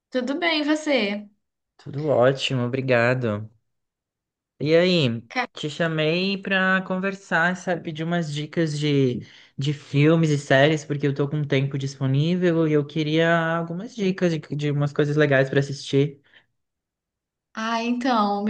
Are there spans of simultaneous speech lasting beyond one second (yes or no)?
no